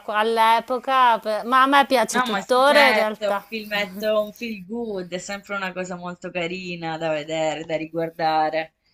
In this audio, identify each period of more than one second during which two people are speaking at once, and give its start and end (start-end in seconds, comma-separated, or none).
2.1-3.4